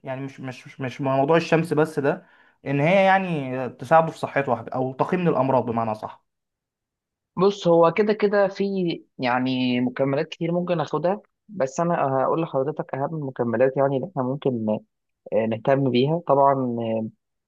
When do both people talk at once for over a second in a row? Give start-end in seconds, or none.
none